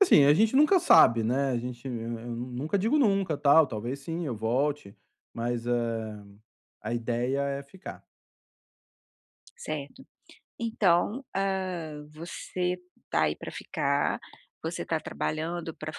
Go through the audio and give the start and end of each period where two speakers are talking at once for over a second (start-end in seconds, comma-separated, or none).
none